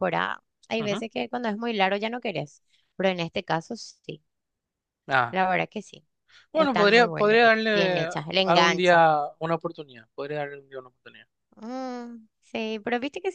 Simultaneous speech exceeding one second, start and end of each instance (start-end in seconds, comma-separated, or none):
6.5-9.0